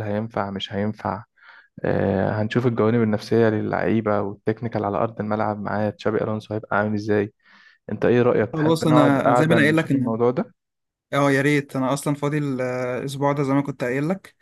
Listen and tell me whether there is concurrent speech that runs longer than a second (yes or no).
yes